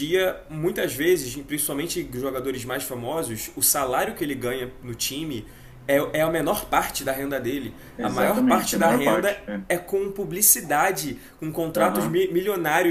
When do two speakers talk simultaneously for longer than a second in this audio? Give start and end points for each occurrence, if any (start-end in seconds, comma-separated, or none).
8.0-9.7